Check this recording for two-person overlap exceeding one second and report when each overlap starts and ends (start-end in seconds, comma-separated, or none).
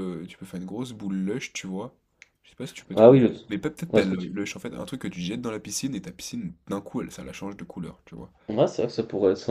none